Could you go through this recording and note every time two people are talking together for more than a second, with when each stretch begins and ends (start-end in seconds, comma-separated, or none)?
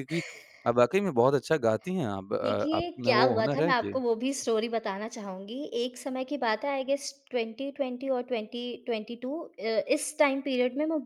2.4-4.4